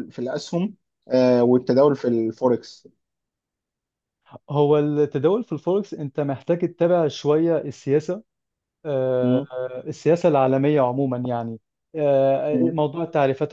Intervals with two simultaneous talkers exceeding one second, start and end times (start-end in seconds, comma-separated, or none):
none